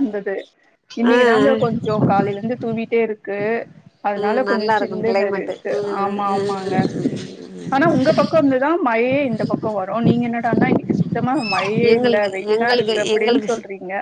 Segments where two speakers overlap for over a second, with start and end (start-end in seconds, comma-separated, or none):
4.2-6.4